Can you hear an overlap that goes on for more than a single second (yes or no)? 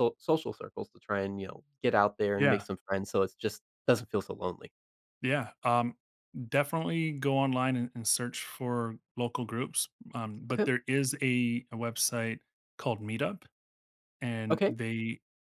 no